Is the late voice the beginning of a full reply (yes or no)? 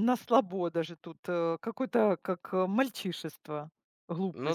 no